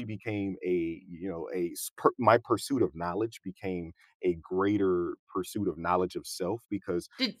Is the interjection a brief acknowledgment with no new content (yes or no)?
yes